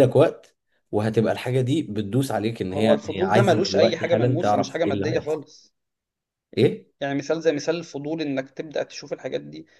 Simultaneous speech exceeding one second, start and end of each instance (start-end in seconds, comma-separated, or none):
2.7-5.4